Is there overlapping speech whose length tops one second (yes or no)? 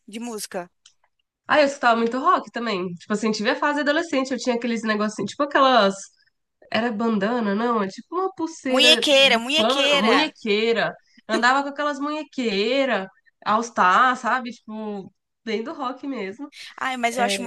yes